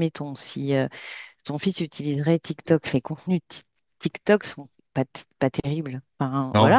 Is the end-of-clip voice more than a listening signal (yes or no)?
no